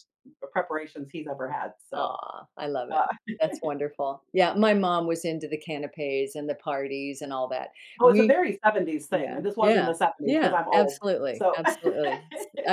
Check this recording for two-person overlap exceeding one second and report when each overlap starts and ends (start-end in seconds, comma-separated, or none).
9.1-11.6